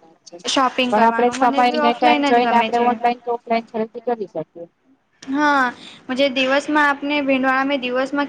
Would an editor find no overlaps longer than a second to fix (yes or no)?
no